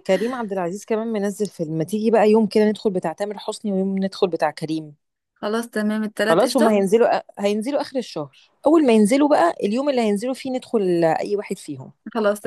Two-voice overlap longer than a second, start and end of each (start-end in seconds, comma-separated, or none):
none